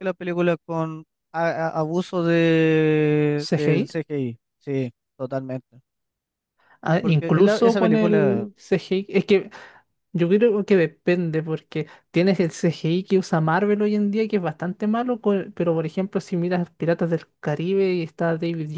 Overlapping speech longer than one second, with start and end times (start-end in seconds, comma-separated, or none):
7.0-8.5